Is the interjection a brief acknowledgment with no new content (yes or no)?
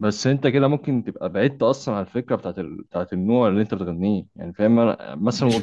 no